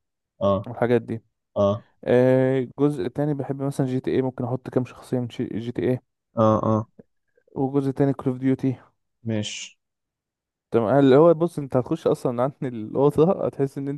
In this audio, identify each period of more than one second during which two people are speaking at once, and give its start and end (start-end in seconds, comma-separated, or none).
none